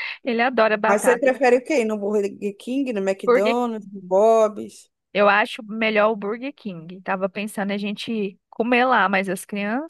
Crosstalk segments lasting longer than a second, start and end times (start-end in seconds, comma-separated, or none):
none